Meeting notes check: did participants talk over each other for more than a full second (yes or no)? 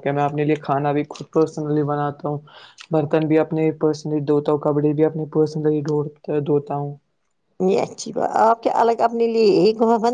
no